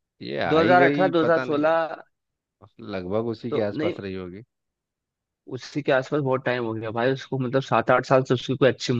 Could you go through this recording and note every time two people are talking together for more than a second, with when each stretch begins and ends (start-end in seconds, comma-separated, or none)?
0.5-1.9